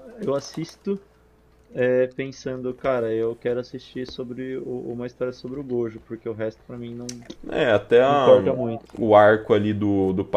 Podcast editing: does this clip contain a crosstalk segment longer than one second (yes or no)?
no